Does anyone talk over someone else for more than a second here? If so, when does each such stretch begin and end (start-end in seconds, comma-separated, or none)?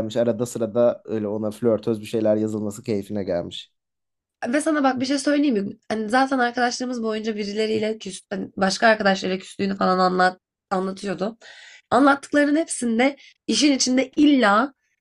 none